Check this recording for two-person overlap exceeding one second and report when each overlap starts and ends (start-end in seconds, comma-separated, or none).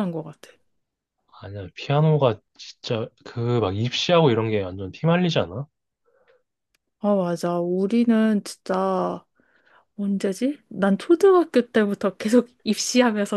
none